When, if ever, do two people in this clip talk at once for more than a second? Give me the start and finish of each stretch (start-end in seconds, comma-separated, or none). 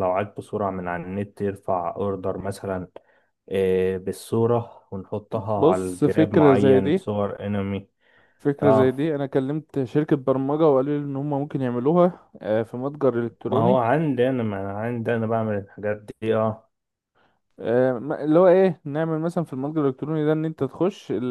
5.6-7.0